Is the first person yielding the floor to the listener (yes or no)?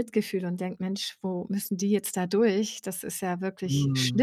no